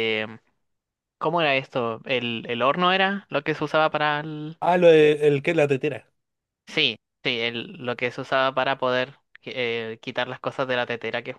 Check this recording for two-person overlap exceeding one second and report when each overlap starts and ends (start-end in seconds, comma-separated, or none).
none